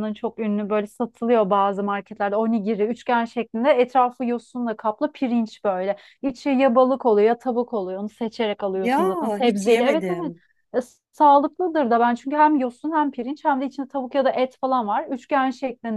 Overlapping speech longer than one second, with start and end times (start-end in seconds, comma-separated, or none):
8.8-10.3